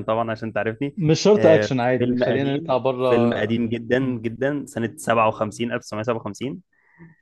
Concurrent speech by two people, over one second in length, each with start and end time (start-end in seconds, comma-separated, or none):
1.4-3.1